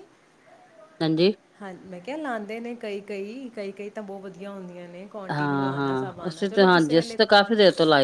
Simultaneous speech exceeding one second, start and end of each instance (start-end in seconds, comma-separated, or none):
5.3-7.2